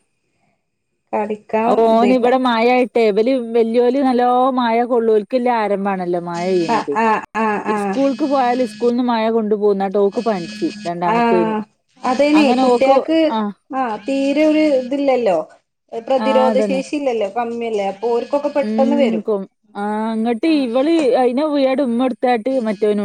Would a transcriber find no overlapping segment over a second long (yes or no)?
yes